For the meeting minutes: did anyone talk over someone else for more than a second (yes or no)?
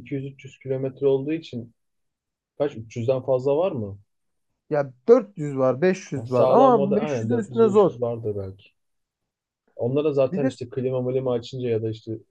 yes